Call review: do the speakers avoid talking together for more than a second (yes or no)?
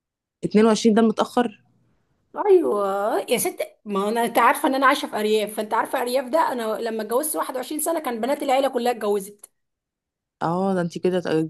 yes